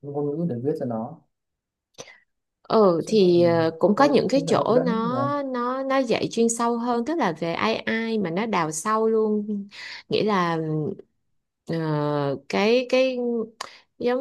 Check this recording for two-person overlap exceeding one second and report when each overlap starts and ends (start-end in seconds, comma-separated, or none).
3.0-5.2